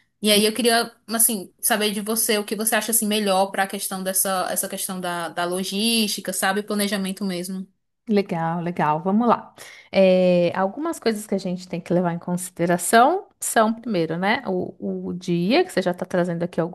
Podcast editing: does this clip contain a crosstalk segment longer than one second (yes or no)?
no